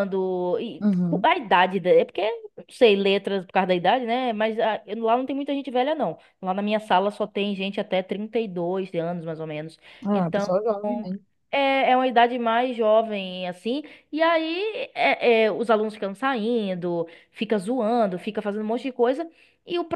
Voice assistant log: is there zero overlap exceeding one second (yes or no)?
yes